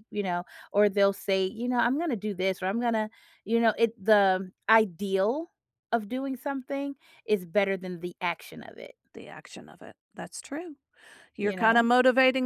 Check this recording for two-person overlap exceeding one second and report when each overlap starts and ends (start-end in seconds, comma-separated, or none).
none